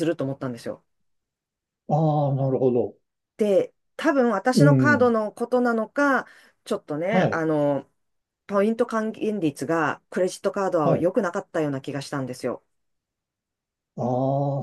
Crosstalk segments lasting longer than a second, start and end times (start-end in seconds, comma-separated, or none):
none